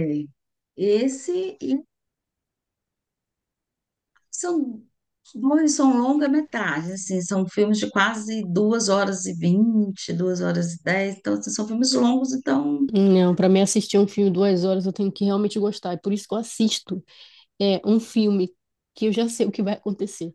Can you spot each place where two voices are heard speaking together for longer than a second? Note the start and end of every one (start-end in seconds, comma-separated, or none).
none